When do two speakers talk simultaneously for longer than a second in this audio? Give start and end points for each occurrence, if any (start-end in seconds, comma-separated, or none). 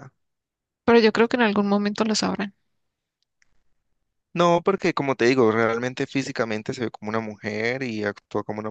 none